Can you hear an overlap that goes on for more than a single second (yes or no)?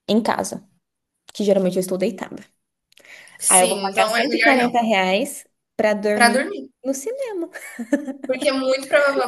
yes